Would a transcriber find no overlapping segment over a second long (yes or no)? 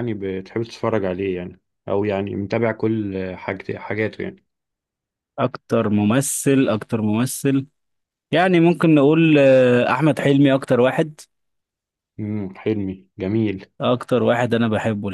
yes